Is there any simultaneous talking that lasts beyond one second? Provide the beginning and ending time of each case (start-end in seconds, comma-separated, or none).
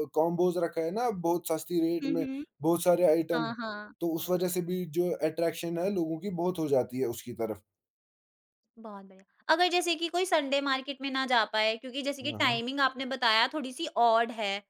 none